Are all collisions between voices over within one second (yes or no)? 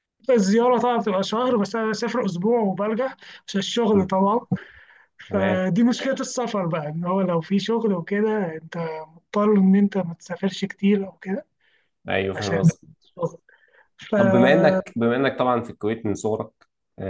yes